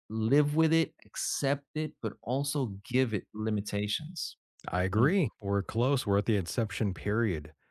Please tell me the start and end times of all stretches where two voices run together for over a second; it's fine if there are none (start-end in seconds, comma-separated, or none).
none